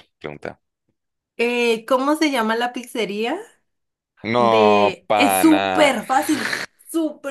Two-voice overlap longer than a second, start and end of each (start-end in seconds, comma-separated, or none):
4.4-5.9